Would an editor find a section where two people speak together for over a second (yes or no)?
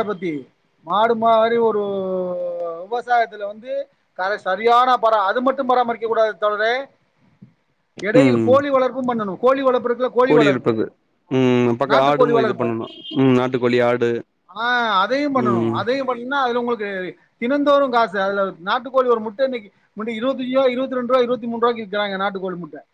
no